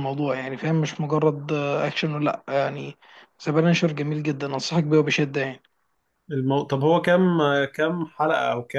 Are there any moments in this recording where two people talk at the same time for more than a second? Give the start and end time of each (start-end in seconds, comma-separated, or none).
none